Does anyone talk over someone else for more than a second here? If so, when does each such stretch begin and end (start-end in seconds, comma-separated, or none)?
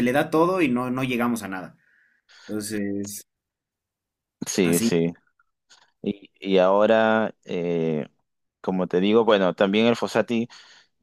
none